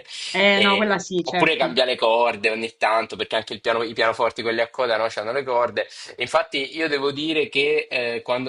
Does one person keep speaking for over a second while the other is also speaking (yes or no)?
yes